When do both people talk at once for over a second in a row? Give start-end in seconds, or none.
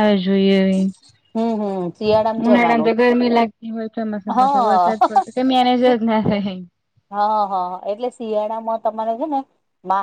none